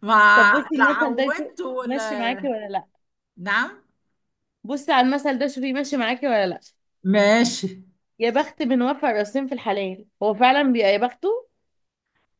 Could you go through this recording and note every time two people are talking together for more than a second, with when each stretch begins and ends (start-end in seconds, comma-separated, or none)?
0.8-2.4